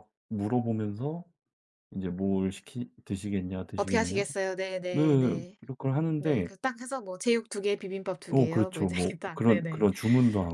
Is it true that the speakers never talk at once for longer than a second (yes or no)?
no